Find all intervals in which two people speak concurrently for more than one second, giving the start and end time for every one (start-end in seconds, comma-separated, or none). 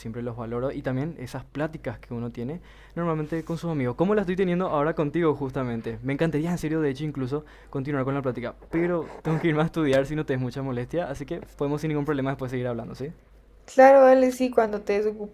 none